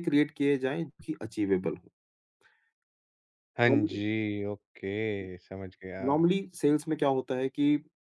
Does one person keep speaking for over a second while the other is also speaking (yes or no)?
no